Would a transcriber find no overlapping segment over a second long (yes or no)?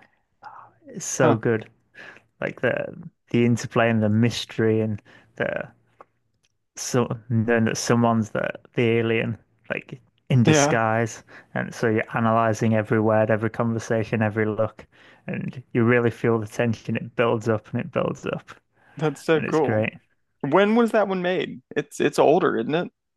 yes